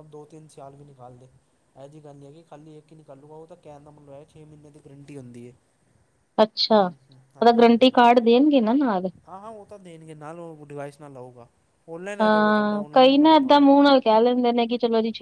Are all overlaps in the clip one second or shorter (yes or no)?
no